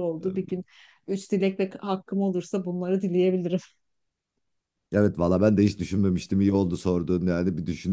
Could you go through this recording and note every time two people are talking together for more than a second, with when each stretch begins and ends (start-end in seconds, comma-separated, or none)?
none